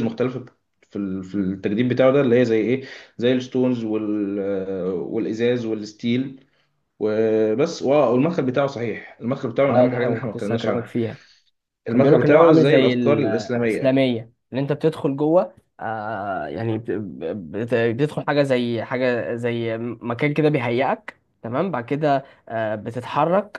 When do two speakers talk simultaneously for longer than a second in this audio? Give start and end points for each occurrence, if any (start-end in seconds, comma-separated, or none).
9.7-10.9, 11.9-13.9